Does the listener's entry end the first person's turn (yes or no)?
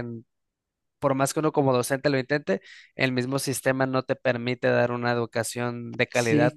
yes